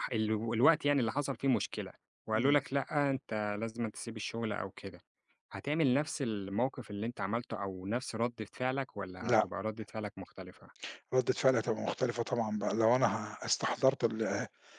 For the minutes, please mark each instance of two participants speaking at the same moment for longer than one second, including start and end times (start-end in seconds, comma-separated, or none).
none